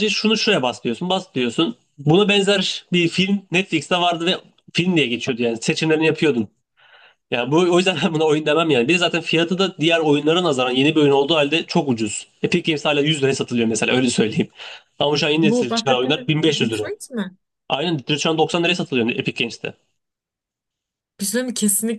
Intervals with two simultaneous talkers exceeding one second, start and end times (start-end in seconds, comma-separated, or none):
15.4-16.9